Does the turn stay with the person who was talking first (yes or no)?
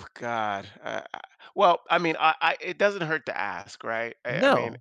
no